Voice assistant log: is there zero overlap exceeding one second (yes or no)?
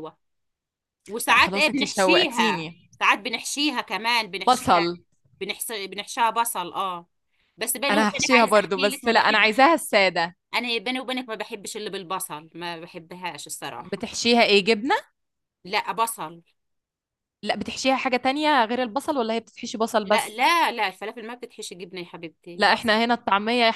no